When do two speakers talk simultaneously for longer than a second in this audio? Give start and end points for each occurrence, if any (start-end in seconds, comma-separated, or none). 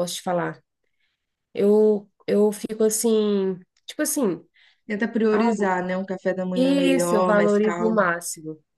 6.5-8.0